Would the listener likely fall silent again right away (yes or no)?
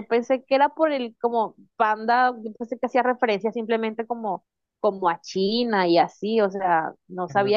yes